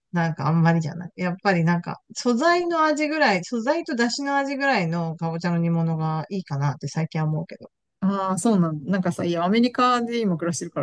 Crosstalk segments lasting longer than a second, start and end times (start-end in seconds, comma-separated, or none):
none